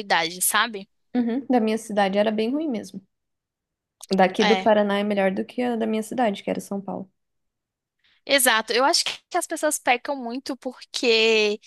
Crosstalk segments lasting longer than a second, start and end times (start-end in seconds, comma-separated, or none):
none